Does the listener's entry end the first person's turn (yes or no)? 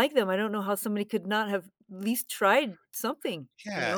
yes